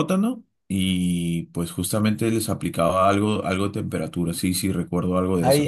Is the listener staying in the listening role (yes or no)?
no